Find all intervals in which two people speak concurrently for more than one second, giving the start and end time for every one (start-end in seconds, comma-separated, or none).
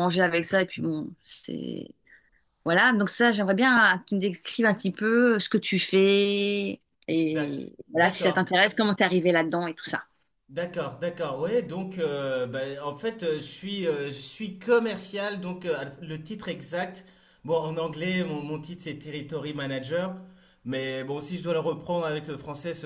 7.2-8.5